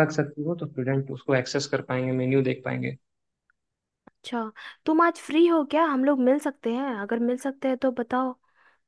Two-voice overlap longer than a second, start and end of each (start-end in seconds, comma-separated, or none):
none